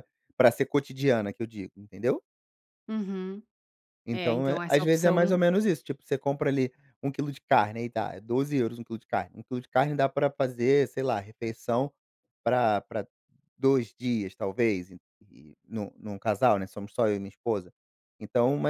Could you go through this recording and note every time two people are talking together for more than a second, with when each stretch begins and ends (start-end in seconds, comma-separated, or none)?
4.1-5.4